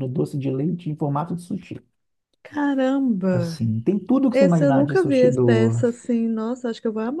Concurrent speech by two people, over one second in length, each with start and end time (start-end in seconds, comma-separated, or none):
4.3-5.8